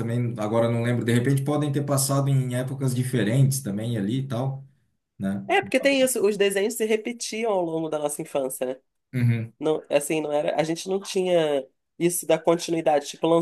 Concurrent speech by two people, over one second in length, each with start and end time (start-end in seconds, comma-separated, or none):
none